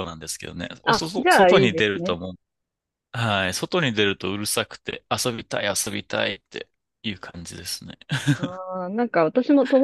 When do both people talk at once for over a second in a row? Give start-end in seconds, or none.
0.8-2.2